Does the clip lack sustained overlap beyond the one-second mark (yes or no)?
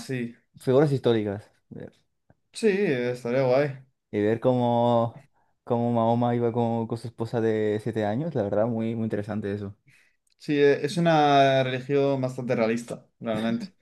yes